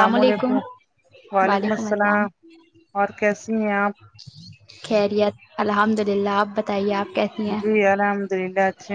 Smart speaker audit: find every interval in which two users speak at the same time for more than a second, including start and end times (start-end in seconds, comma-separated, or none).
none